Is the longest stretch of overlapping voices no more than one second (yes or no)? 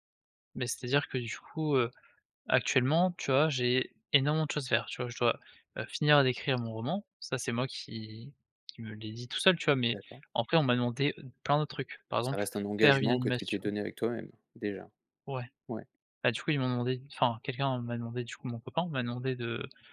no